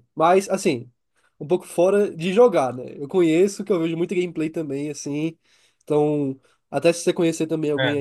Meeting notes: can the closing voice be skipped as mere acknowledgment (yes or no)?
yes